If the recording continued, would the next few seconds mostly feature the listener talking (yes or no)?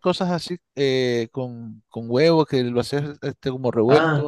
yes